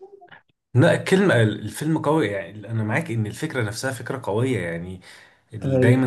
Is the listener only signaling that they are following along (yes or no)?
yes